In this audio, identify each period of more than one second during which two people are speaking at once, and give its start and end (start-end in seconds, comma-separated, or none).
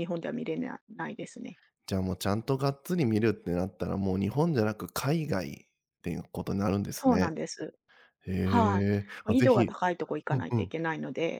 none